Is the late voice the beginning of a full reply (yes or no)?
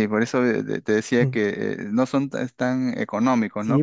yes